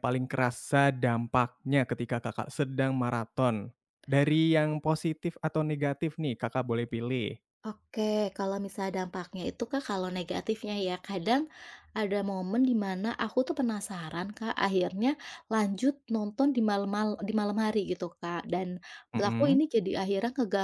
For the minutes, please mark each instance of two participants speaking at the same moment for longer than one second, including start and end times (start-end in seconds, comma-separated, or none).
none